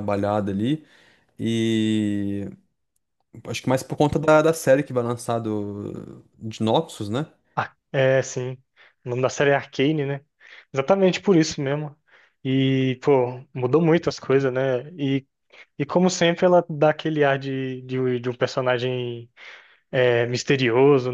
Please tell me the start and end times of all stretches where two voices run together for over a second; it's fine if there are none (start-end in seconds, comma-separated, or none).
none